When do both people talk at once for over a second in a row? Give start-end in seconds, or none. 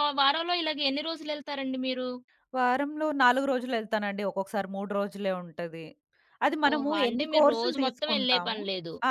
6.7-8.6